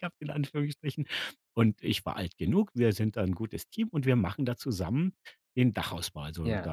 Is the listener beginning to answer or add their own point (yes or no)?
no